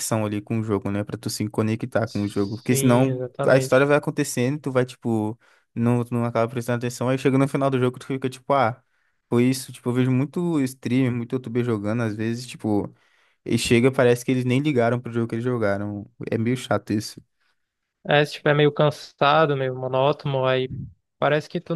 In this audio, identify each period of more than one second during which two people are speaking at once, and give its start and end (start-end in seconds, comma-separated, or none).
2.0-4.0